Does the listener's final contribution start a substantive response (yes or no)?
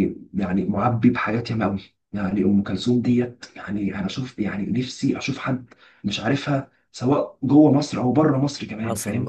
yes